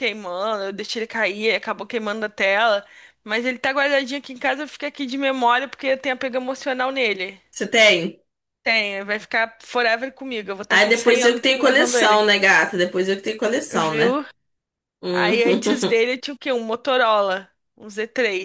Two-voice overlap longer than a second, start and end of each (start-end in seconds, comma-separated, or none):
10.7-12.2